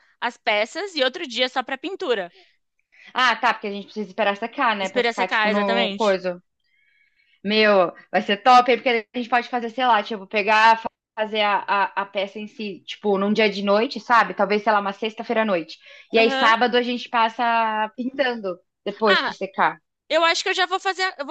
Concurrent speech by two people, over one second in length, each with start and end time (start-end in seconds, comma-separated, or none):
4.8-6.2